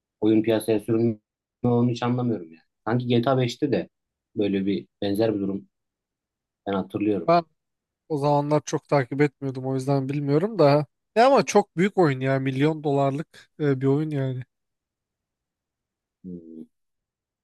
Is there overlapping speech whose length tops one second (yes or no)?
no